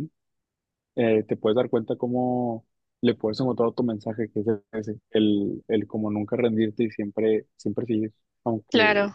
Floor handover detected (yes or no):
no